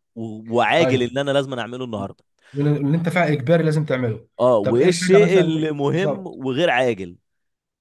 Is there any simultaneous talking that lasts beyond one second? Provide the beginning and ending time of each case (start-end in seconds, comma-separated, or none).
4.4-6.4